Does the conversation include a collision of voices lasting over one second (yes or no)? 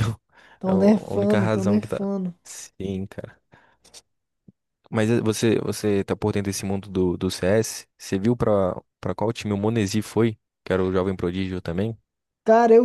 yes